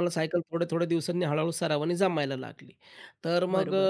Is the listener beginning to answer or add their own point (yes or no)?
no